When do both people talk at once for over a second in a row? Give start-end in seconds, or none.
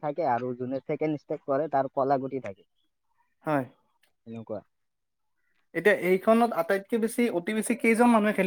none